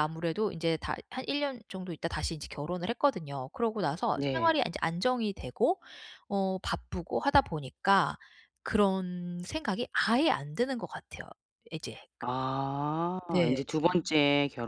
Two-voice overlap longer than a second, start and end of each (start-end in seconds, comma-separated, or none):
none